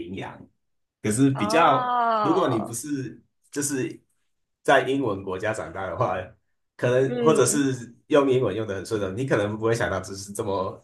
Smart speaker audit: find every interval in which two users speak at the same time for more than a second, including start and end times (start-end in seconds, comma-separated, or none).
1.3-2.8